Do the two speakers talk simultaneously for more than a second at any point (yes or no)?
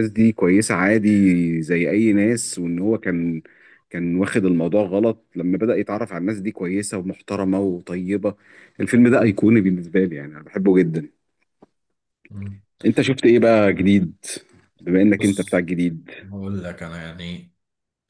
no